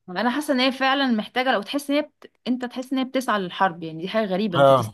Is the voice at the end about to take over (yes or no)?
yes